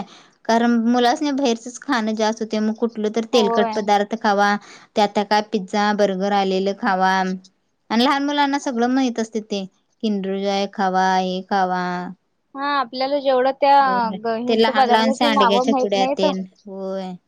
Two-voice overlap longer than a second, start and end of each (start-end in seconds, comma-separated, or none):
14.4-16.2